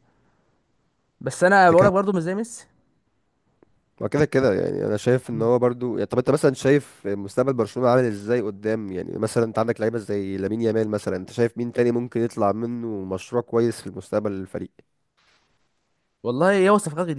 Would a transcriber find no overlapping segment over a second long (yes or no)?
yes